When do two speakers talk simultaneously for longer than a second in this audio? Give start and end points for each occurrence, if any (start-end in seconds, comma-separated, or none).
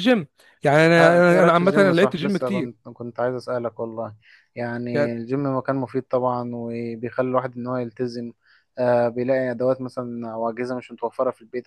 1.0-2.7